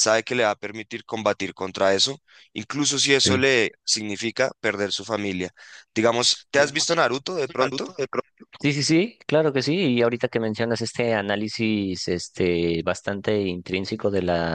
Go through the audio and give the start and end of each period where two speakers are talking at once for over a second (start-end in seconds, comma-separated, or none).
none